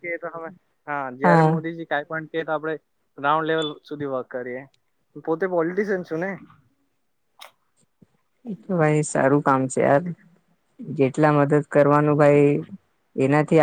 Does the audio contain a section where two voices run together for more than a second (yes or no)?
no